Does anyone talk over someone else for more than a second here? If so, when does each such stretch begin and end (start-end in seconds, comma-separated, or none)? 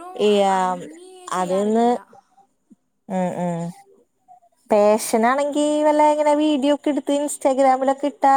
none